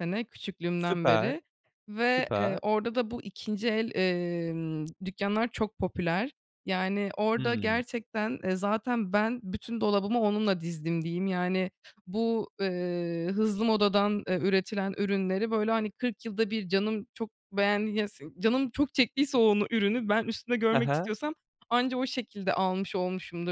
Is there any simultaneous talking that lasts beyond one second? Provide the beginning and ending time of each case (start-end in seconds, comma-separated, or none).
none